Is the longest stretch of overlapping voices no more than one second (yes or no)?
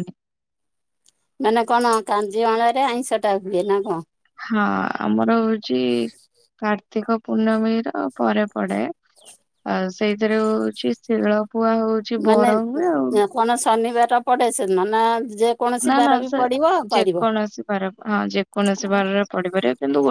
yes